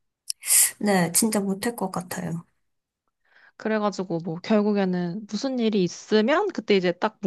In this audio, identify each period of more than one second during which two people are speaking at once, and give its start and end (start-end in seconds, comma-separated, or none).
none